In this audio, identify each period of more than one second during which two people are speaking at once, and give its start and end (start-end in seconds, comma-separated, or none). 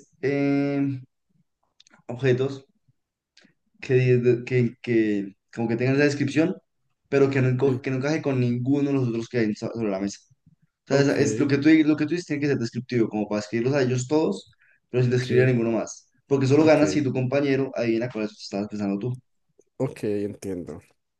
none